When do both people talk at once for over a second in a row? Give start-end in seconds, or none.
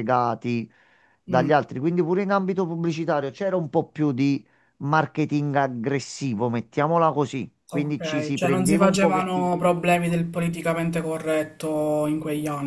7.7-10.0